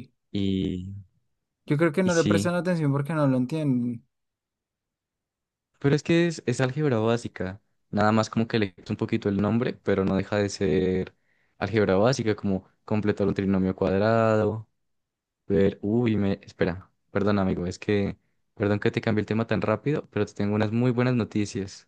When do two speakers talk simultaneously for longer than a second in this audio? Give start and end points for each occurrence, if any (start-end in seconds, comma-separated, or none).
none